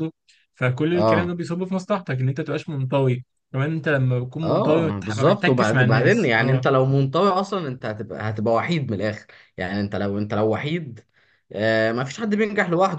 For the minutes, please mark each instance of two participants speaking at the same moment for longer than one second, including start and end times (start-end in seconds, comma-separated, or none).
4.4-6.7